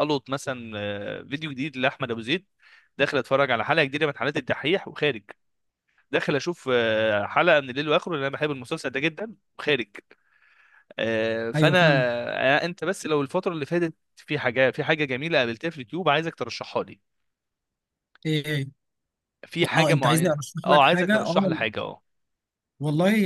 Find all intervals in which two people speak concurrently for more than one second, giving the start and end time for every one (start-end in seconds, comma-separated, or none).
19.7-21.6